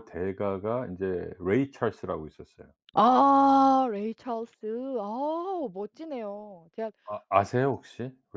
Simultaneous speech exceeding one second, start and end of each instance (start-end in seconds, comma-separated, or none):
none